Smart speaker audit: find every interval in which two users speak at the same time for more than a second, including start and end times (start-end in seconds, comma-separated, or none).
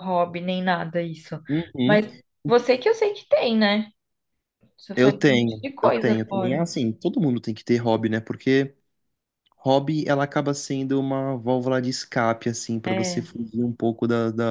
5.0-6.6